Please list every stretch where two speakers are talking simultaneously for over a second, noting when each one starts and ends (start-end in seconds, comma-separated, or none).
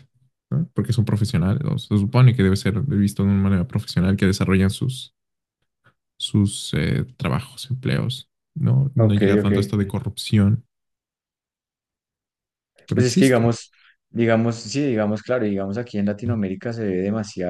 none